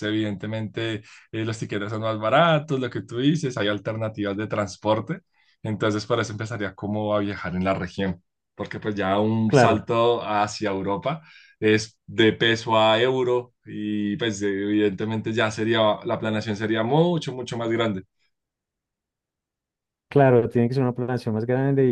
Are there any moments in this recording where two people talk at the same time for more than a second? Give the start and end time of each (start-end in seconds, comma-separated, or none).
none